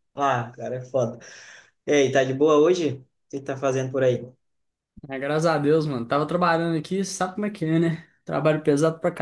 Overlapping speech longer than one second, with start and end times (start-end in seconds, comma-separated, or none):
none